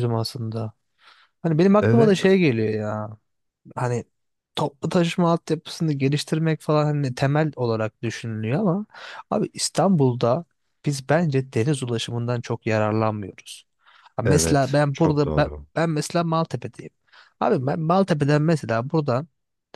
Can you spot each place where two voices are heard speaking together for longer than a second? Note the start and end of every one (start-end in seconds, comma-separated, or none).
14.2-15.7